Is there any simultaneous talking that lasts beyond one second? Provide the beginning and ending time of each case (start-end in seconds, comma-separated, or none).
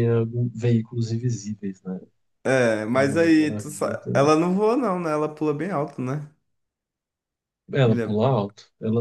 2.9-4.3